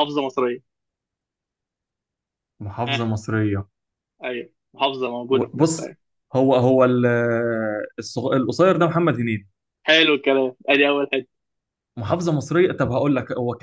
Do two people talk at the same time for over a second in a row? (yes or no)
no